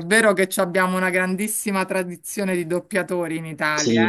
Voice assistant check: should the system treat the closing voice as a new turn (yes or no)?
yes